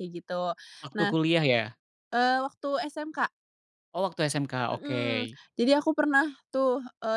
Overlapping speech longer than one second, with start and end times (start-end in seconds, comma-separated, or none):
none